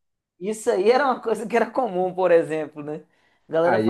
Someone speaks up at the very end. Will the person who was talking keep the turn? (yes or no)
no